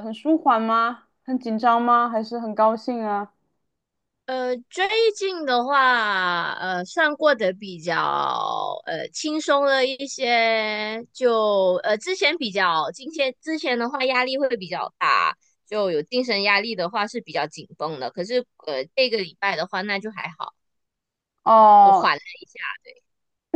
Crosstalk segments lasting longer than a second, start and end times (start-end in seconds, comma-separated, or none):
none